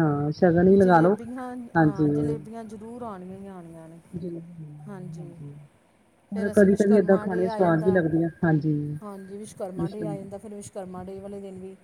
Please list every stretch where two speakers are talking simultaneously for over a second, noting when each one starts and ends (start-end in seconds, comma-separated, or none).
6.3-8.0